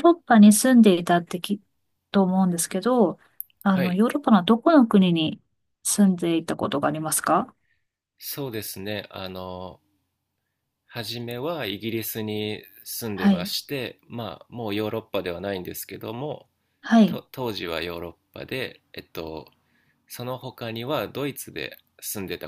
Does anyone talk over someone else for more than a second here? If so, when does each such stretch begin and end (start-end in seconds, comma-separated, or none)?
none